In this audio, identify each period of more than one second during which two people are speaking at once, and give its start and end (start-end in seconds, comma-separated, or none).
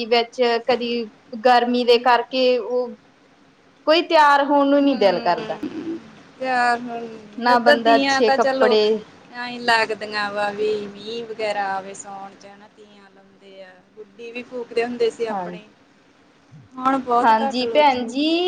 7.4-8.7